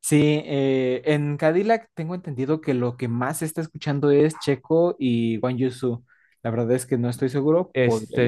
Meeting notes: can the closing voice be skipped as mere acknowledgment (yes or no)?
no